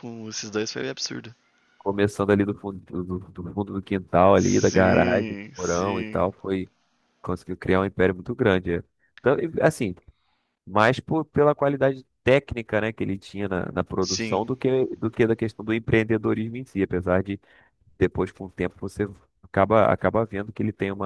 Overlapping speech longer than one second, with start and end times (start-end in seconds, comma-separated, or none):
4.4-6.2